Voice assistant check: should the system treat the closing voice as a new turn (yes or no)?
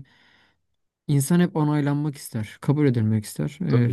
no